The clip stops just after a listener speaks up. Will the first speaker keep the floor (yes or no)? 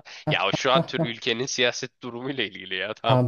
no